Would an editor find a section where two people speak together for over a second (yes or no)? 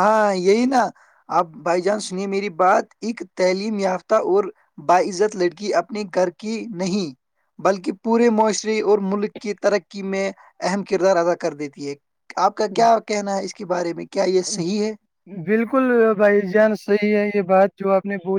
no